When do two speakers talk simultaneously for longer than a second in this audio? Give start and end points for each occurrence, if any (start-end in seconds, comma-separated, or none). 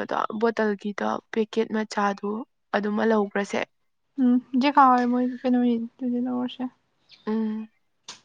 none